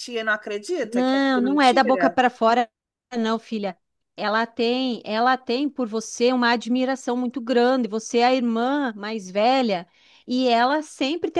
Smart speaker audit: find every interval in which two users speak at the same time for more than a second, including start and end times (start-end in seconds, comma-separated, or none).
0.8-2.2